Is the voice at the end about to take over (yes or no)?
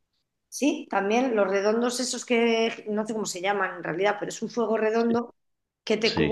no